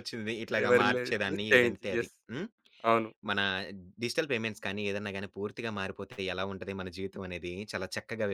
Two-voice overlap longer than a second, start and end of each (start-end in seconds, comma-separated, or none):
0.6-2.1